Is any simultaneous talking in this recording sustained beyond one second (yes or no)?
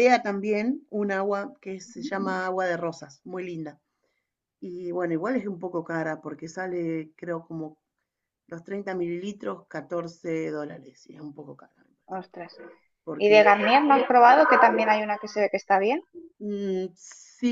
no